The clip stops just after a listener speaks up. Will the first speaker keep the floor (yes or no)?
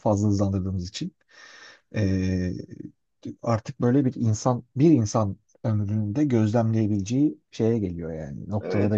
no